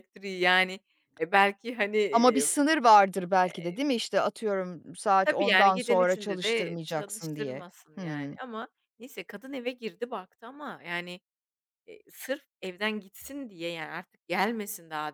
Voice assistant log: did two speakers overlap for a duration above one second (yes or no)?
yes